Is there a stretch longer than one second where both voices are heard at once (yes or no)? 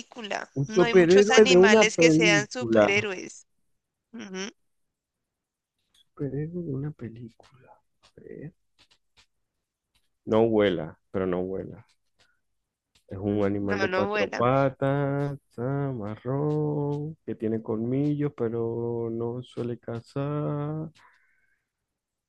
yes